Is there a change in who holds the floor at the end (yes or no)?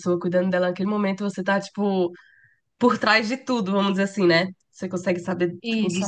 no